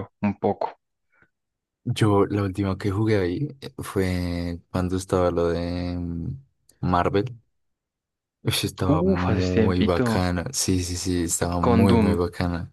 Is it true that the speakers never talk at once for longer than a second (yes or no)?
no